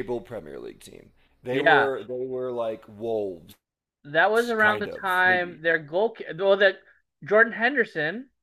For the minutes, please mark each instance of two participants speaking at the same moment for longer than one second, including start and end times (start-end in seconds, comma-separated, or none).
4.3-5.6